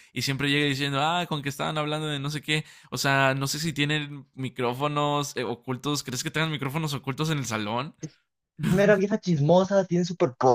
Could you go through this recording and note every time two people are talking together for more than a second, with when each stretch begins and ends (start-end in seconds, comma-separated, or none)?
none